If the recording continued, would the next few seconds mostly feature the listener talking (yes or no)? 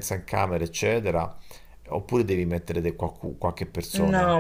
yes